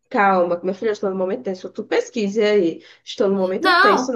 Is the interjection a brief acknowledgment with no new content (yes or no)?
no